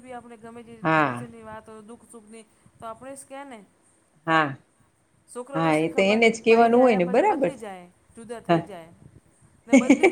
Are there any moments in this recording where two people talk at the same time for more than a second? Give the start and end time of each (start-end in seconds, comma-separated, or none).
5.5-7.6